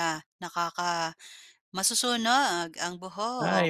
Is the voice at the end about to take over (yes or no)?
yes